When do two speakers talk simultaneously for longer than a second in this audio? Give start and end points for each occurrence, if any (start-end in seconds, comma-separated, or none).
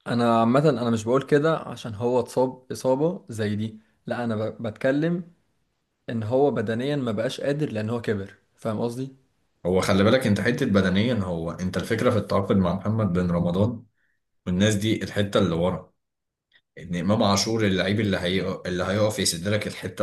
none